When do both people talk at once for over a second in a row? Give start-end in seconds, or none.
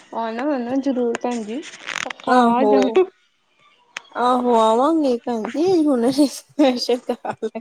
none